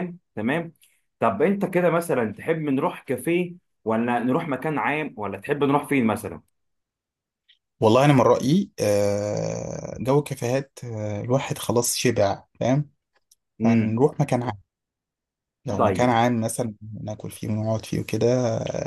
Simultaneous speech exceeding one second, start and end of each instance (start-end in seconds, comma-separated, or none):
none